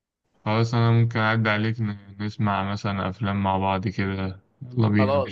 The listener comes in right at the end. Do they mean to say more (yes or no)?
yes